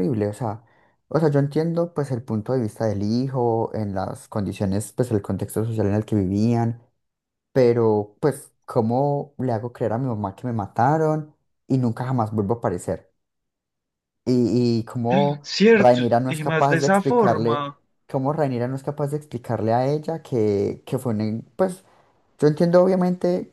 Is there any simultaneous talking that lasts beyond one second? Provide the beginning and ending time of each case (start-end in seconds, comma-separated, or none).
15.4-17.7